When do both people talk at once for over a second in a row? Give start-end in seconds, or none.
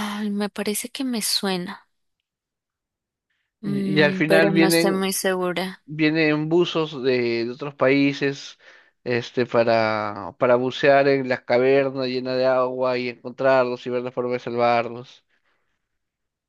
3.6-5.0